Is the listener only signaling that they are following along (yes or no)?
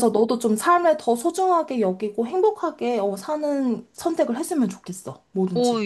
no